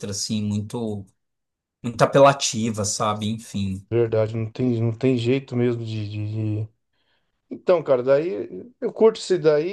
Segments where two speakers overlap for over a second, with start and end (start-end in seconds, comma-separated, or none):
none